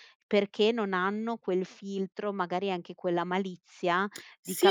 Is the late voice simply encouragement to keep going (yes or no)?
no